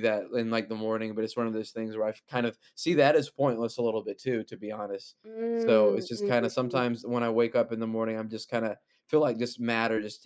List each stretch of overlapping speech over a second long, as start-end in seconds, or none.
5.5-6.8